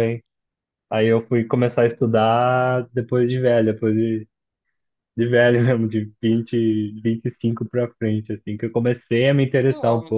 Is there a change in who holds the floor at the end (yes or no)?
no